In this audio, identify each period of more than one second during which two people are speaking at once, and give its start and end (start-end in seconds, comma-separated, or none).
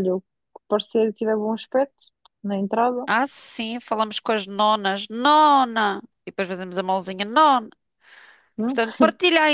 none